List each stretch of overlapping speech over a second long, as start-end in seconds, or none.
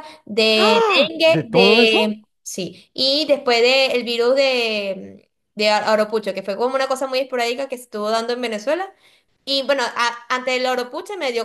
0.6-2.1